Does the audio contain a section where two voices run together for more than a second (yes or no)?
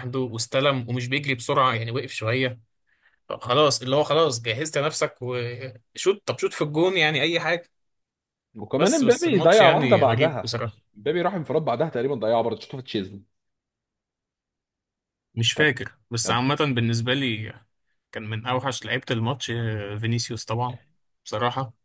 yes